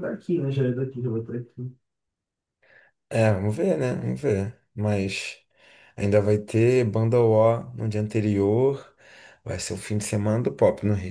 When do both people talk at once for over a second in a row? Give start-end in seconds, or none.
none